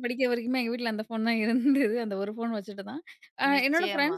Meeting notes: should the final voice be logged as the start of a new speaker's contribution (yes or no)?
no